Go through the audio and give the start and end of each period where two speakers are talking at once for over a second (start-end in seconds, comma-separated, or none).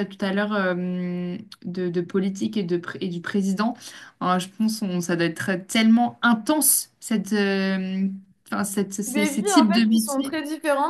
9.1-10.4